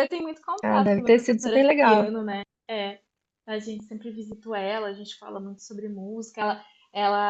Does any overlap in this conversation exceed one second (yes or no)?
yes